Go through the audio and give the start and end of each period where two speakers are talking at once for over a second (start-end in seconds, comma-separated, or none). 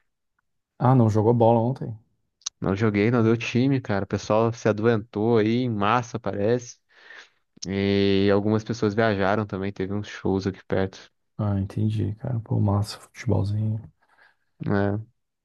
none